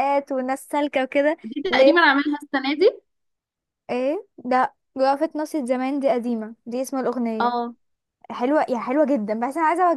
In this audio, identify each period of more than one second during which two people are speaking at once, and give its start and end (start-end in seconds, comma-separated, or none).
none